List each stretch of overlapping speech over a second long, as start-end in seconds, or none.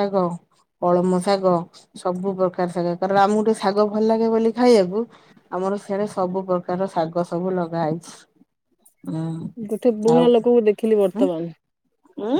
none